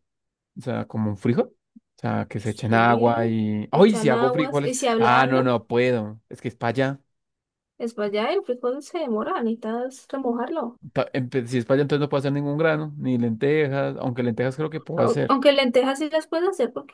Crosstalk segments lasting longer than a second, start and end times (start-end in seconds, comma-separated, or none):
2.4-5.5